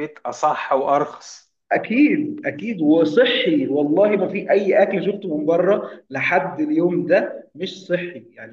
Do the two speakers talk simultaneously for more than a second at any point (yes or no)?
no